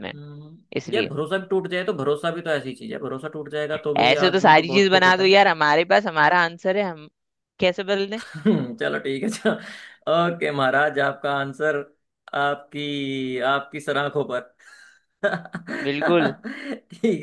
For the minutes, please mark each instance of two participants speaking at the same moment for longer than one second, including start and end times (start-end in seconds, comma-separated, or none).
4.0-5.5